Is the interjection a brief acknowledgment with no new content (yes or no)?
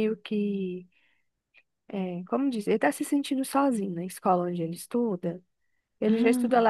yes